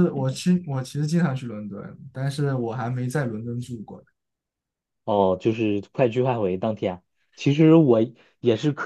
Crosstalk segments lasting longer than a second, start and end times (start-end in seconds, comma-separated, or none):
none